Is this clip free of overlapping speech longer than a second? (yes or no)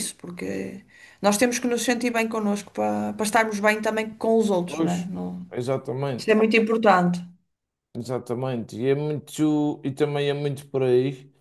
yes